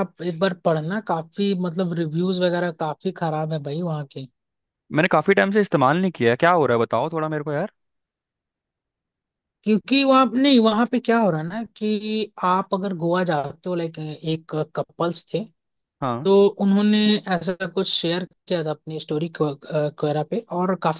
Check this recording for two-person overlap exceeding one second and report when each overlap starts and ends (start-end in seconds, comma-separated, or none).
none